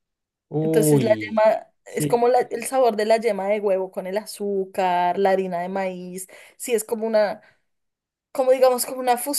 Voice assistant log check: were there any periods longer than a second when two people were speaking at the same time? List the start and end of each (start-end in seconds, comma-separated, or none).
0.6-2.3